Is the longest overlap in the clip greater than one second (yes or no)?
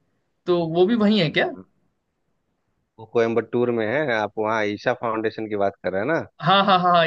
no